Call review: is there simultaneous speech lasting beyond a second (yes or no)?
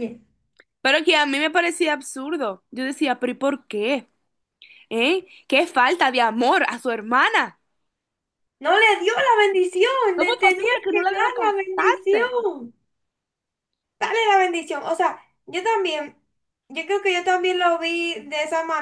yes